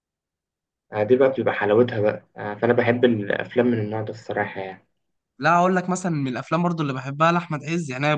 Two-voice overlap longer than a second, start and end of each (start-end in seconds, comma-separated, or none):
none